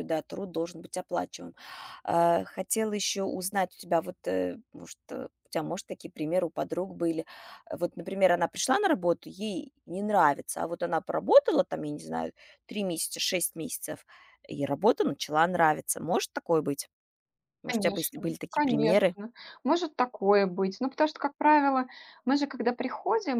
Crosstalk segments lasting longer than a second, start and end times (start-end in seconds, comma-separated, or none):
17.7-19.1